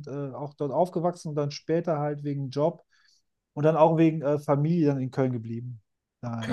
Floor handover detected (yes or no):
yes